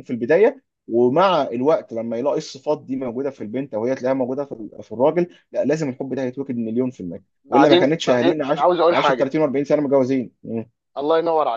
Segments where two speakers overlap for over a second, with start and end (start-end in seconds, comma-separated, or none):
7.4-9.3